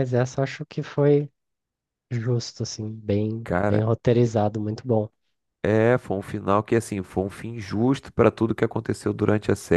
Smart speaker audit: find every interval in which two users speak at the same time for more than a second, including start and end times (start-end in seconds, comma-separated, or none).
none